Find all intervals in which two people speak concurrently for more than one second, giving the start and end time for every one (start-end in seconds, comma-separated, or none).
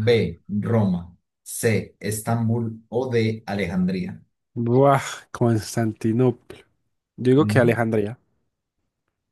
none